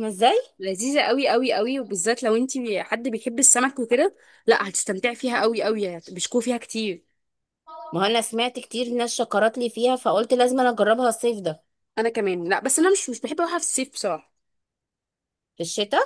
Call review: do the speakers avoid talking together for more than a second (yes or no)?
yes